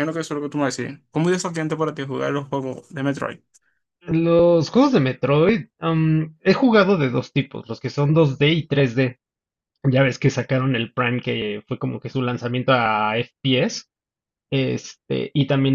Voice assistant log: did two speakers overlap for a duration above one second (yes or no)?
no